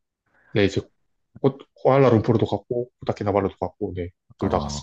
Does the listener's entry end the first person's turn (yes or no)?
yes